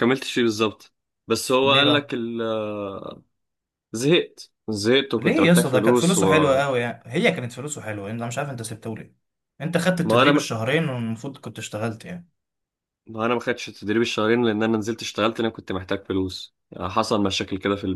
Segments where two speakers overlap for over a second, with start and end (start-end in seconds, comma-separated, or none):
5.2-6.7